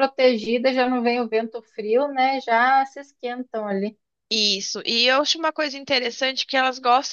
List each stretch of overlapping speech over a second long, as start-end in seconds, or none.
none